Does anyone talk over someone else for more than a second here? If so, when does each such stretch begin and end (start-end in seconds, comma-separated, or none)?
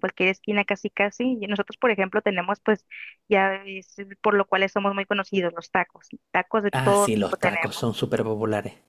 6.7-8.0